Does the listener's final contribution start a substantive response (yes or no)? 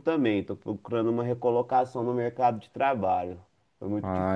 yes